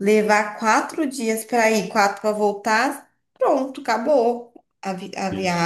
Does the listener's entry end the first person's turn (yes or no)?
no